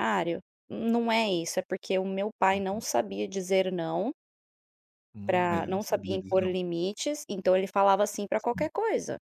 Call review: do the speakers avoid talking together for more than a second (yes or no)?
no